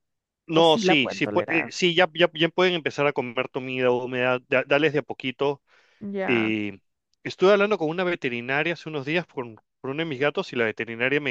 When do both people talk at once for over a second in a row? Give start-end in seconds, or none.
0.5-1.7